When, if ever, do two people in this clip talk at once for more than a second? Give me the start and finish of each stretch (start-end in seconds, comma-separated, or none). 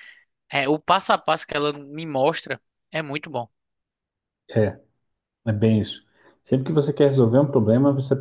none